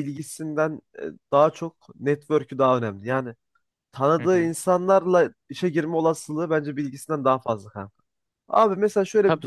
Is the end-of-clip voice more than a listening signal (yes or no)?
no